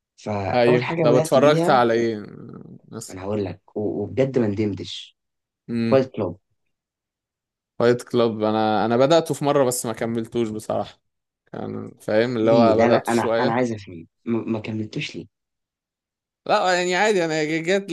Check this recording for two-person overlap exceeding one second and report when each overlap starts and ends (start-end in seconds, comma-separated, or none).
0.5-1.8, 12.4-13.7